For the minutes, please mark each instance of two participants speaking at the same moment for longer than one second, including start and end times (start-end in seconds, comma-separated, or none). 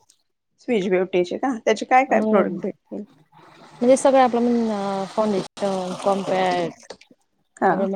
none